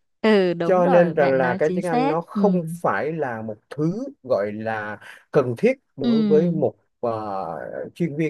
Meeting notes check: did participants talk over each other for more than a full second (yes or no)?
yes